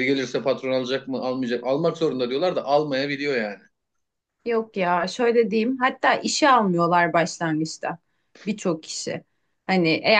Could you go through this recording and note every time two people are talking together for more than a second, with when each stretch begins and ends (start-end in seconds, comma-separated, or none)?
none